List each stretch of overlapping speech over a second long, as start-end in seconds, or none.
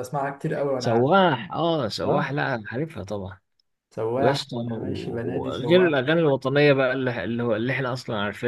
4.2-5.9